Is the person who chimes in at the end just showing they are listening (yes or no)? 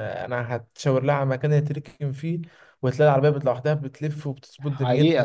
no